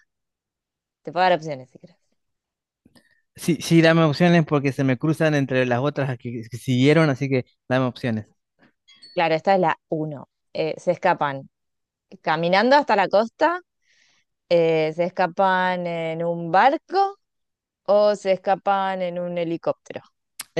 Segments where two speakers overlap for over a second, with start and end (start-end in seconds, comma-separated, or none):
none